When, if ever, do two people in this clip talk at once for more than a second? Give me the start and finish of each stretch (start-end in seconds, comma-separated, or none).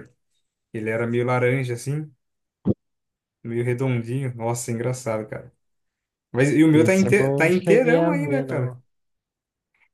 6.7-8.8